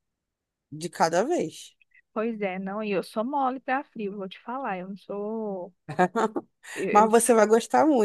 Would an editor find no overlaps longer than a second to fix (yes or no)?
yes